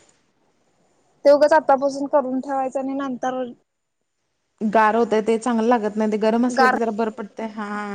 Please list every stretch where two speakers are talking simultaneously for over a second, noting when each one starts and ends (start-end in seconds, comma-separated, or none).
none